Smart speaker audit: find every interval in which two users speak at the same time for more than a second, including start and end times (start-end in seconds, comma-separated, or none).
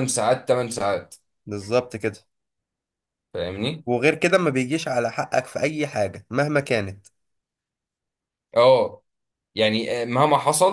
none